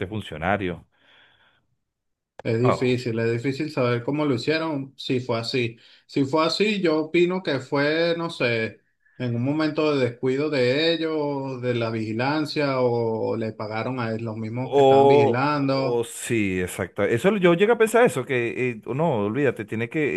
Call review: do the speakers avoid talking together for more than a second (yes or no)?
no